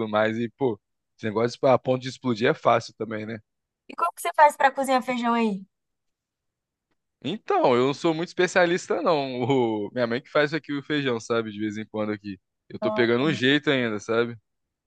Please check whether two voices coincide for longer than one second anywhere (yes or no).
no